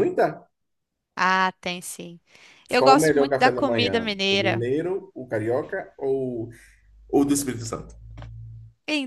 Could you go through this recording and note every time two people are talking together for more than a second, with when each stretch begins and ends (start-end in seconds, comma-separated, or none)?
2.8-4.6